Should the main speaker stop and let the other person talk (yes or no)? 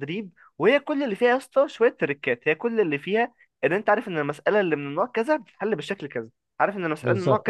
no